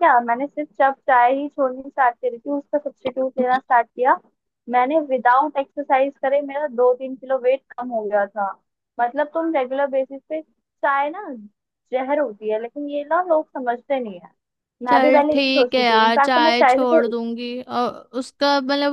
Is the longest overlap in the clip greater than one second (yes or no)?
yes